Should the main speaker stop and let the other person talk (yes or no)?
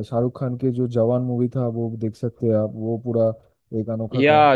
yes